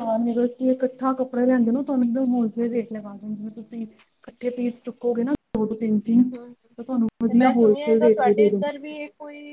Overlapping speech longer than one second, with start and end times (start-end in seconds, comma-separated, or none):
7.3-8.6